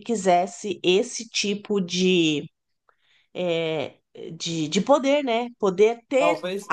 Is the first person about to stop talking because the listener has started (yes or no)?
no